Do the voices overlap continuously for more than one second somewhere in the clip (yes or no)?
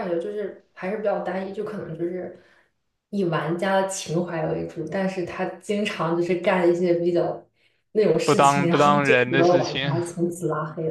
yes